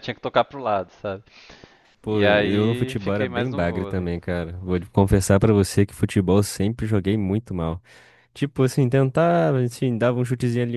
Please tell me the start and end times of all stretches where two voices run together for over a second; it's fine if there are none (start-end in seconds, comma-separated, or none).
2.1-4.1